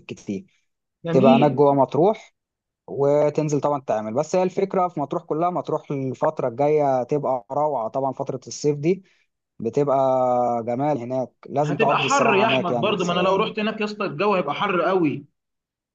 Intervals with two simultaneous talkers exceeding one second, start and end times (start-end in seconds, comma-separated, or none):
11.6-12.9